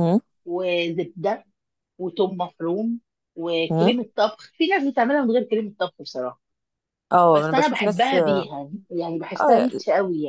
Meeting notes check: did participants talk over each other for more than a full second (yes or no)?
yes